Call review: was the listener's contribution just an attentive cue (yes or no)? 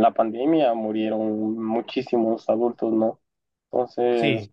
no